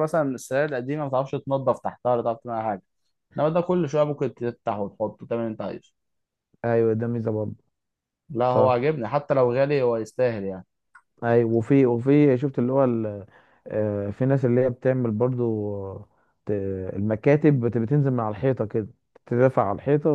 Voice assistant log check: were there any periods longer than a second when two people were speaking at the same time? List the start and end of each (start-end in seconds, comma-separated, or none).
none